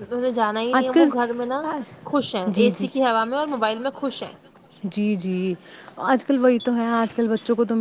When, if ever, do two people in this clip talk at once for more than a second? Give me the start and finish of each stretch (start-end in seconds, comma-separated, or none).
none